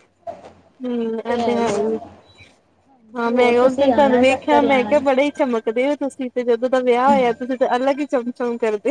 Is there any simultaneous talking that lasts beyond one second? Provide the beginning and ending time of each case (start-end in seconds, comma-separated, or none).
3.3-5.0